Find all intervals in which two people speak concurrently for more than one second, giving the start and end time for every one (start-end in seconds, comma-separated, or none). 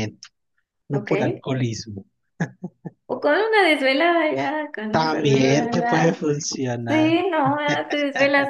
4.9-6.2